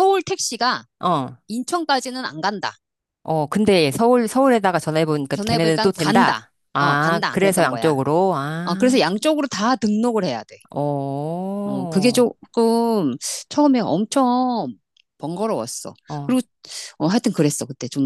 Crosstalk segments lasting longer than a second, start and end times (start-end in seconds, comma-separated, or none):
5.3-7.9